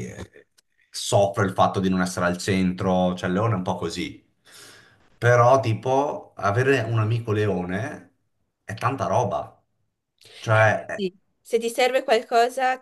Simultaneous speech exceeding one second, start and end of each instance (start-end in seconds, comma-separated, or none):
none